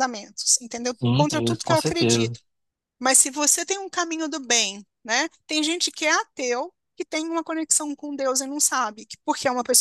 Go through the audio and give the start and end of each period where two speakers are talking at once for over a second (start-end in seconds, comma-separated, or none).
0.8-2.4